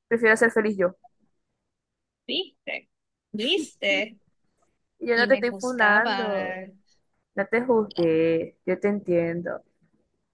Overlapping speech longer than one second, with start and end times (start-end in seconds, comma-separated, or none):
5.1-6.6